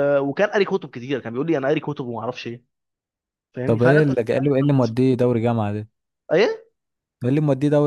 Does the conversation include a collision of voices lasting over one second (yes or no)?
yes